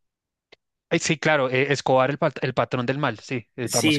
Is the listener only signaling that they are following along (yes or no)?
no